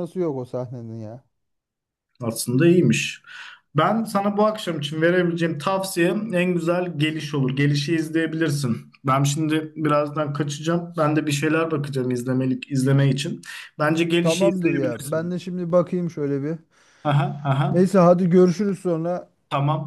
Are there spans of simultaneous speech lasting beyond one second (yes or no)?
yes